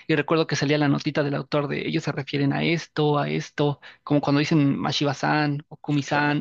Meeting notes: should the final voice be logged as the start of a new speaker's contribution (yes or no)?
no